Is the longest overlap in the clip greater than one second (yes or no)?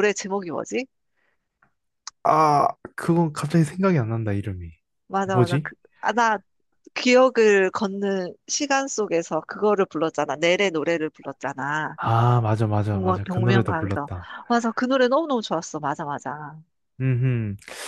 yes